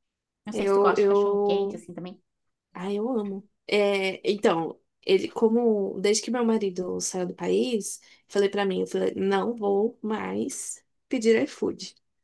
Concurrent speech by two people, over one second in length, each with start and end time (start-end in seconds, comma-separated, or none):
0.5-1.8